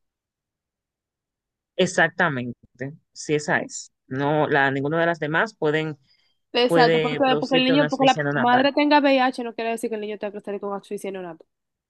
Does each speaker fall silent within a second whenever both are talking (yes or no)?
no